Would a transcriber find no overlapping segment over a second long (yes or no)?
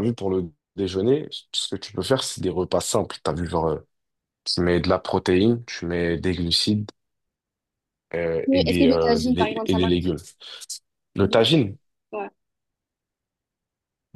no